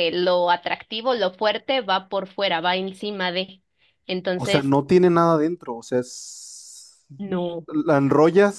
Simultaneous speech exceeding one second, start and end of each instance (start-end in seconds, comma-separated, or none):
none